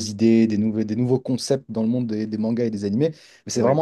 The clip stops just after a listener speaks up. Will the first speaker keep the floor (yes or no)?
yes